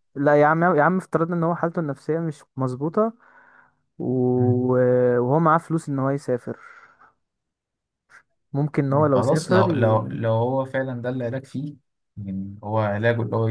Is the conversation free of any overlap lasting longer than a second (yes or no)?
no